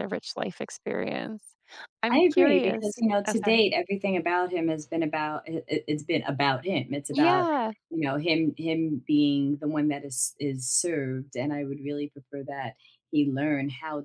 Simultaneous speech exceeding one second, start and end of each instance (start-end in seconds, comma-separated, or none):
2.1-3.6